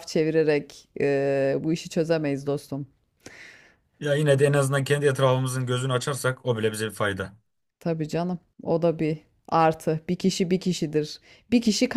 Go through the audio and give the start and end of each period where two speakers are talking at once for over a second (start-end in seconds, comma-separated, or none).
none